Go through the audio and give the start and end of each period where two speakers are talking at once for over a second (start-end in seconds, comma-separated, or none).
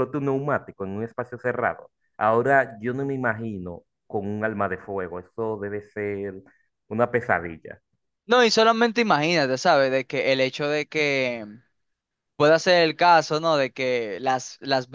none